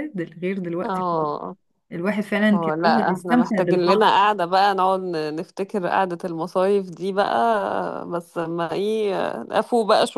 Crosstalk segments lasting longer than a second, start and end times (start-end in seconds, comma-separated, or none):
2.5-4.1